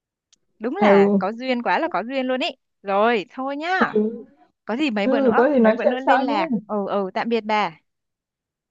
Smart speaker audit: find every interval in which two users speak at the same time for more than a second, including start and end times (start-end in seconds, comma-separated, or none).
5.0-6.4